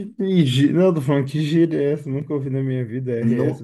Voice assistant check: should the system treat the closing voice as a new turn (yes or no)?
yes